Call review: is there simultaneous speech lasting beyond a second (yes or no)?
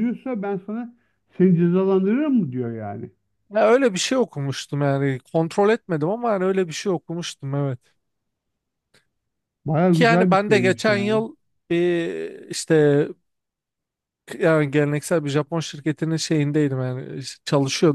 yes